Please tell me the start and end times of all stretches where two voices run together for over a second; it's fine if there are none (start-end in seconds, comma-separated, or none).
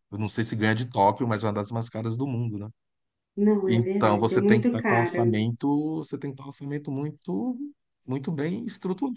3.6-5.4